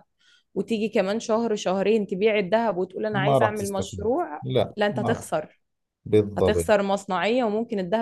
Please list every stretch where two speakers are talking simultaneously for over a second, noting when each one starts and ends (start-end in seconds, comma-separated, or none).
3.1-5.2